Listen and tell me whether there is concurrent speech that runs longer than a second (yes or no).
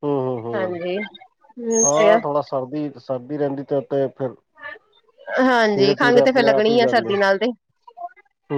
yes